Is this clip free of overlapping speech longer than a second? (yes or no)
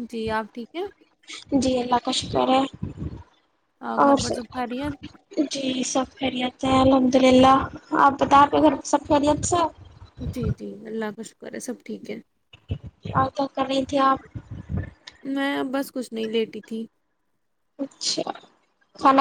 yes